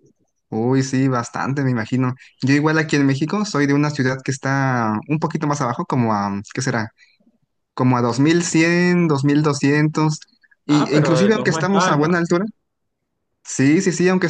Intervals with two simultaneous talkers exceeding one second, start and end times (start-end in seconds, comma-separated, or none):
10.7-12.2